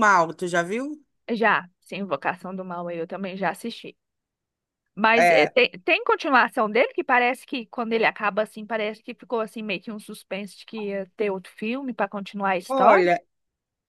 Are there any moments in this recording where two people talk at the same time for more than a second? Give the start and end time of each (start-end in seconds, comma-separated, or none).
none